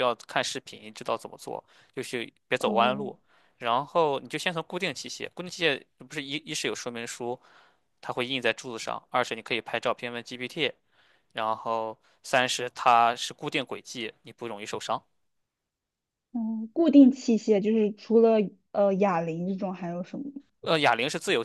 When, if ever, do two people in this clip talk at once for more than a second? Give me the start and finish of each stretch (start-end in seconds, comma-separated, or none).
none